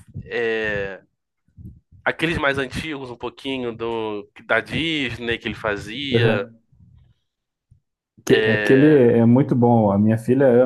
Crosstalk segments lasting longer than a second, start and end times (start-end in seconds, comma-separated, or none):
none